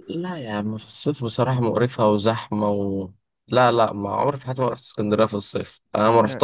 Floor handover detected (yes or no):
no